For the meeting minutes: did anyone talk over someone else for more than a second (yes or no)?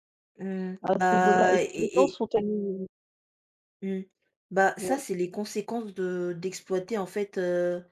yes